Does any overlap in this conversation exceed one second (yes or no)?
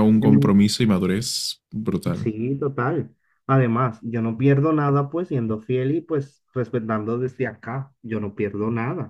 no